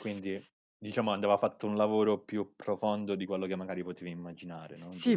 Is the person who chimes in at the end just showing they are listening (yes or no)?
no